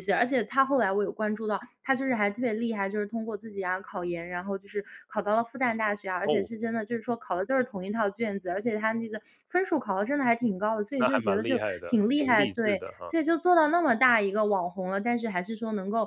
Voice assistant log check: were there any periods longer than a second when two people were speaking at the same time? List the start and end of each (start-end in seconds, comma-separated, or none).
11.0-13.1